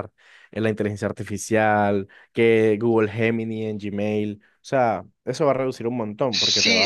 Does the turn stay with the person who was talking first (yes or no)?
no